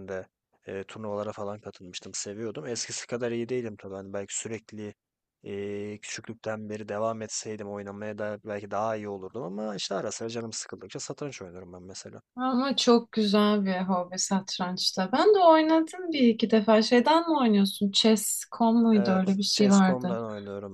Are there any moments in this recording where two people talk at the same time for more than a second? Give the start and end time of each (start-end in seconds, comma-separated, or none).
18.9-20.2